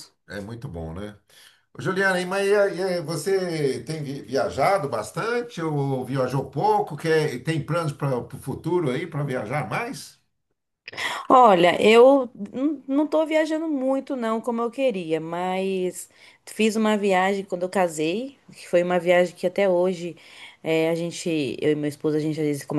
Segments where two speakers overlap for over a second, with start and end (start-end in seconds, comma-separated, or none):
none